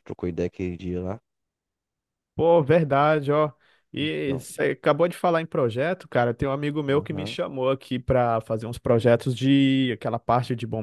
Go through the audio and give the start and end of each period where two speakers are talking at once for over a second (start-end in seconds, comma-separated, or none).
none